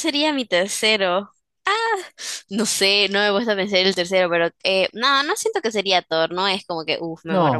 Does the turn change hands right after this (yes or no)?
yes